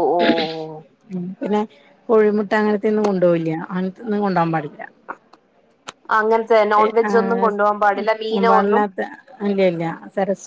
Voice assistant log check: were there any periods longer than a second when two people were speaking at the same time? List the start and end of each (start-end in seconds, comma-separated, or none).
6.8-8.8